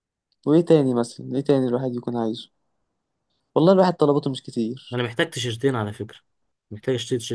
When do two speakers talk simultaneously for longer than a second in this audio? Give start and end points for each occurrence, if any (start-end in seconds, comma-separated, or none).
none